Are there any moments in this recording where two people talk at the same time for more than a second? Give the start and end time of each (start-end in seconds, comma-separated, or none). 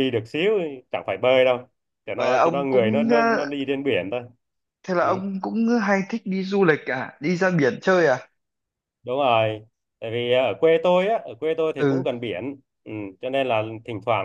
2.2-3.5